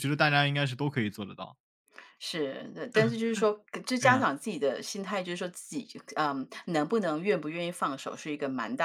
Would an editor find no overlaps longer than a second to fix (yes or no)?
yes